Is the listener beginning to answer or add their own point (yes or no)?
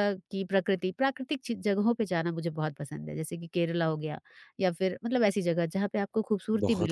yes